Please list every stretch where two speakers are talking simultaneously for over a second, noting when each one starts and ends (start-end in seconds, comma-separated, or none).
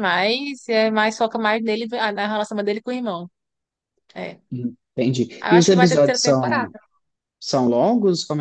5.4-6.7